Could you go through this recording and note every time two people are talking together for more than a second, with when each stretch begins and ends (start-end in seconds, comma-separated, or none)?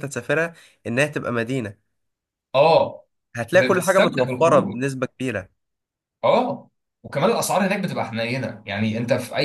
3.5-4.8